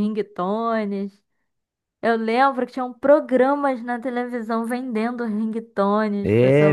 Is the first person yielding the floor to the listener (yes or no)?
yes